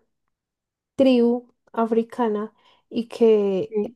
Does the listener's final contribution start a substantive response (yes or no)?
no